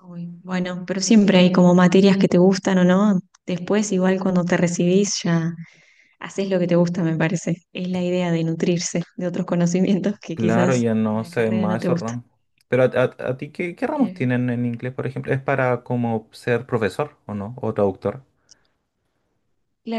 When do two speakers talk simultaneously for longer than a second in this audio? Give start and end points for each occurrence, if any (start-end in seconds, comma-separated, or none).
10.3-12.1